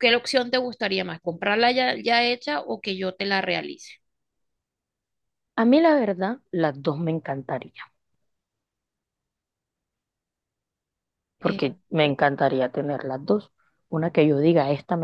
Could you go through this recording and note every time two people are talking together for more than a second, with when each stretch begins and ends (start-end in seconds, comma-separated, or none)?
none